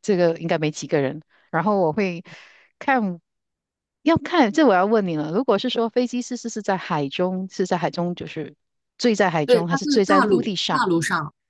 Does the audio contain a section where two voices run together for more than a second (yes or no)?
yes